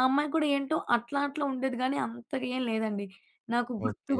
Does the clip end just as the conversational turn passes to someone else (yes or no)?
no